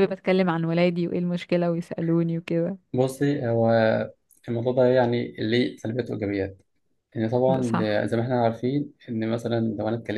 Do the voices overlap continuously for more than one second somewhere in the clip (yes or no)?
no